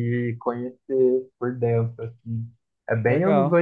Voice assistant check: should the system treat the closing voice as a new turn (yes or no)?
no